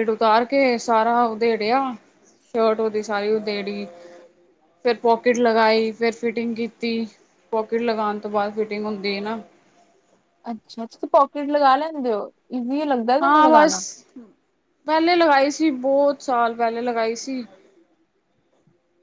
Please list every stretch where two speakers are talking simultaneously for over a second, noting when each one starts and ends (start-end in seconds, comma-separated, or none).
none